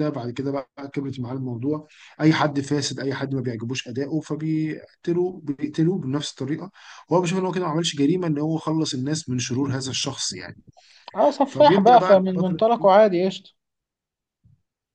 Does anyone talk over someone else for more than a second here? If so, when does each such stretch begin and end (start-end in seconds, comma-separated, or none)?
11.4-12.9